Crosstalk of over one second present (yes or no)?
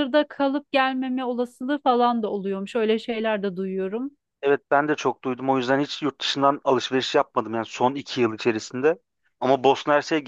no